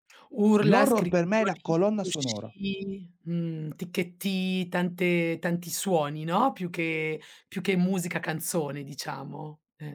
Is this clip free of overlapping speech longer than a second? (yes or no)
no